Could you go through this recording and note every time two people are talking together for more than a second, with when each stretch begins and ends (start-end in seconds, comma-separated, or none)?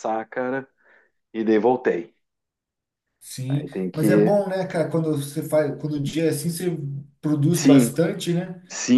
none